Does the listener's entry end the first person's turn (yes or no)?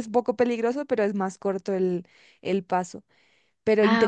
no